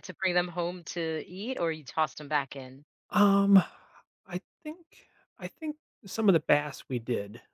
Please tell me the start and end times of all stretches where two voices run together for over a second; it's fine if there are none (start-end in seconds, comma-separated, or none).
none